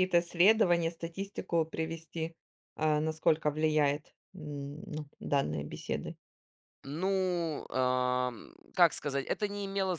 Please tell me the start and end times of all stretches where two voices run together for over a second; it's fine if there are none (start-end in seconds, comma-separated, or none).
none